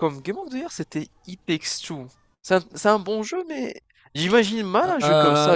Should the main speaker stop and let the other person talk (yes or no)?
yes